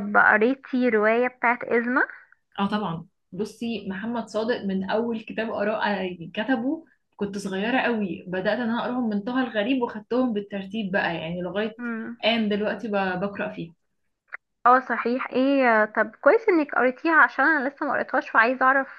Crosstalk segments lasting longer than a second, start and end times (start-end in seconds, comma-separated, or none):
none